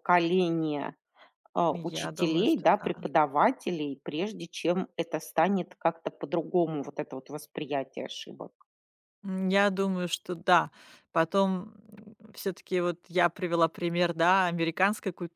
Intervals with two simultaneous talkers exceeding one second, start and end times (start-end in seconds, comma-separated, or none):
1.8-3.1